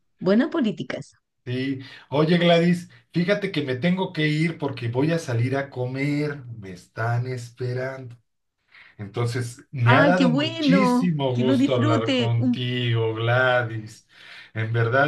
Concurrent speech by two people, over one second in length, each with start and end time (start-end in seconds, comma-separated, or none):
9.8-12.6